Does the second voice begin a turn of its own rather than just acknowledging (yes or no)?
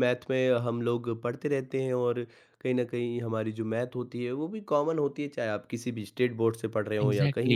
no